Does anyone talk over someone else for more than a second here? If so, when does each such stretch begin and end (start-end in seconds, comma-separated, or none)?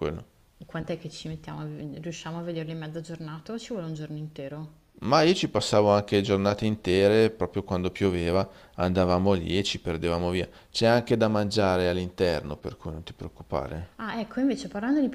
none